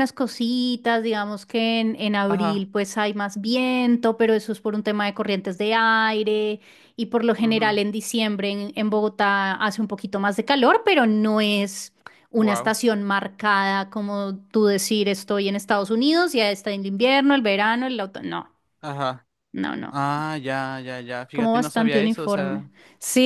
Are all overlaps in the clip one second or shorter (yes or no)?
no